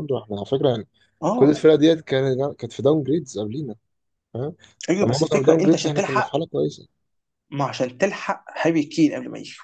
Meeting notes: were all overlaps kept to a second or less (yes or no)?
no